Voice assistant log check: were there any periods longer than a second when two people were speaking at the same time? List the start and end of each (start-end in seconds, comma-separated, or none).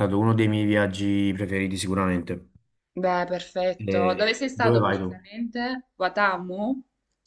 3.8-5.2